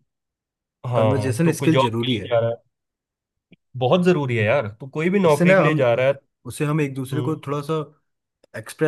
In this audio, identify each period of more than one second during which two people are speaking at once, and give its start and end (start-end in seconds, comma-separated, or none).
0.9-2.3